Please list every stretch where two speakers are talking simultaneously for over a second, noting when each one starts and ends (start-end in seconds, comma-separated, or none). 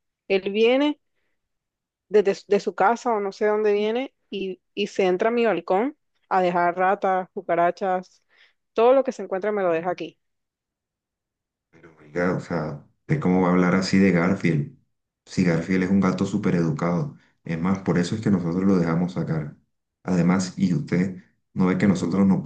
none